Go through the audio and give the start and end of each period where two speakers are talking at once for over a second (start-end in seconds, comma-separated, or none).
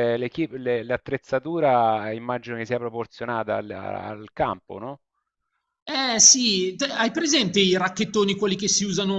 none